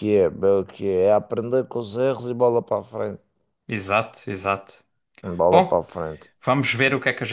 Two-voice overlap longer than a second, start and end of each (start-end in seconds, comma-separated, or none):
none